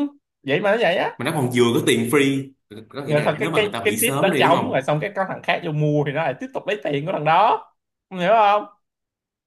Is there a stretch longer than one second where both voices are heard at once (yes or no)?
yes